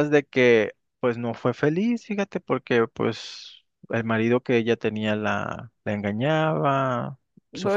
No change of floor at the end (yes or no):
no